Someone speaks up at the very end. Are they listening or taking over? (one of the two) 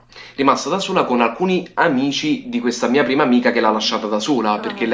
listening